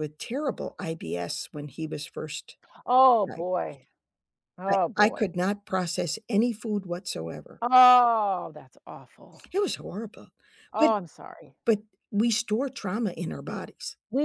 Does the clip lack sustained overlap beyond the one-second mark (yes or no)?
yes